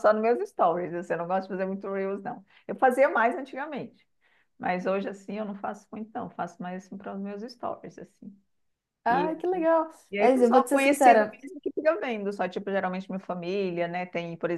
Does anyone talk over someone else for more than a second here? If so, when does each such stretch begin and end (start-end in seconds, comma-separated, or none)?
10.1-11.4